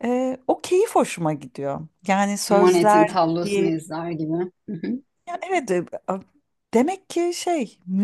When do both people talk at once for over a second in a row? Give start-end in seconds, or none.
none